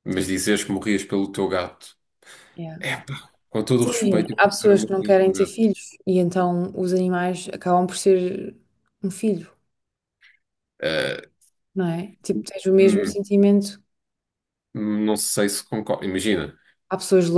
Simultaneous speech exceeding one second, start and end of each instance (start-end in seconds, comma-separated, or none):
3.8-5.6